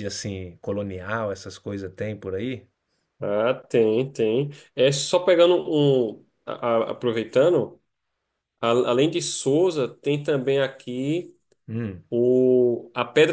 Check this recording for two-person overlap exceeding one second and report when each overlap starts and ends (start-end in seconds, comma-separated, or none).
none